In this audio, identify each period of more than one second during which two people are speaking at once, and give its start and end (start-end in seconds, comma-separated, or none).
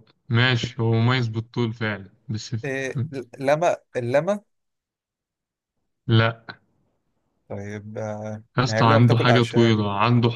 8.6-9.8